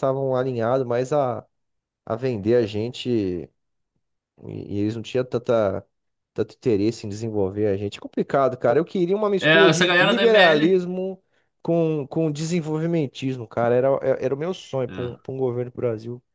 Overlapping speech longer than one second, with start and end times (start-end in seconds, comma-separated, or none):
9.4-10.8